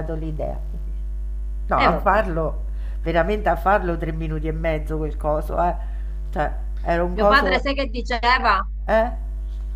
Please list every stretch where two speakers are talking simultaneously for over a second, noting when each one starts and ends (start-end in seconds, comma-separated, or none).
none